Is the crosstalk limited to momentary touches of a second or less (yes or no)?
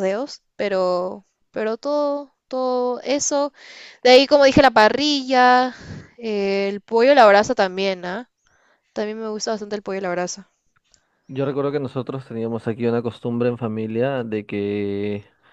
yes